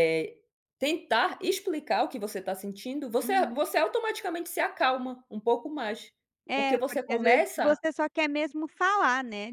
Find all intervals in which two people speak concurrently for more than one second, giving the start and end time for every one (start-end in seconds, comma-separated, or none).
6.5-7.8